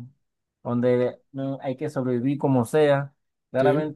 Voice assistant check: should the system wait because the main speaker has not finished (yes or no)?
yes